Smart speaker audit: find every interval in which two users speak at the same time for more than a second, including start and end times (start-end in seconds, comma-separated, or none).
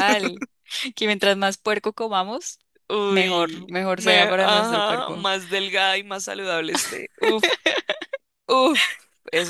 3.1-5.3